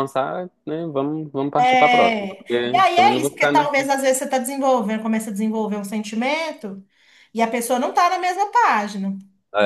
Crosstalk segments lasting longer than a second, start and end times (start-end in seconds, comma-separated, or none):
1.6-3.9